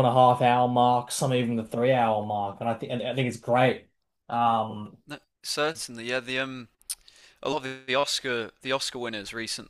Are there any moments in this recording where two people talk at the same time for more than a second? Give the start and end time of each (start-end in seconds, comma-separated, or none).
none